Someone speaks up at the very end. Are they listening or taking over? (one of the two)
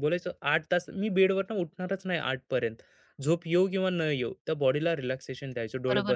taking over